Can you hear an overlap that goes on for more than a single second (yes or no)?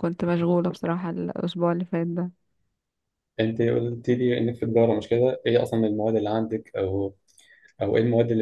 no